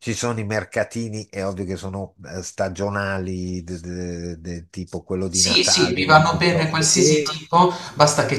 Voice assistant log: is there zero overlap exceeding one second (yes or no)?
no